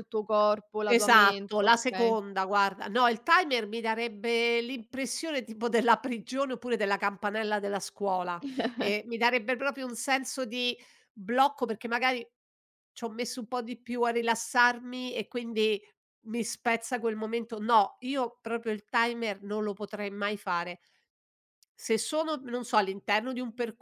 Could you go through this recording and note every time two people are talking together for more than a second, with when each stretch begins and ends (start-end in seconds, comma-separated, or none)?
0.9-2.1